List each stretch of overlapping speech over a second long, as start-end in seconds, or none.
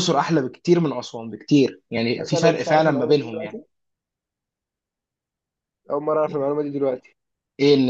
2.2-3.6